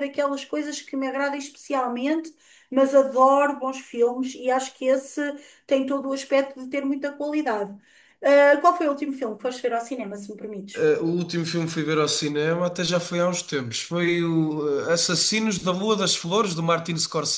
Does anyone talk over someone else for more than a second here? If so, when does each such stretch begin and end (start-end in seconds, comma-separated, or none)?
none